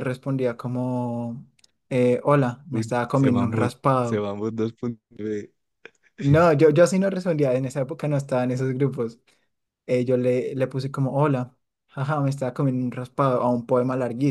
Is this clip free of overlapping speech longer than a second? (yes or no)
no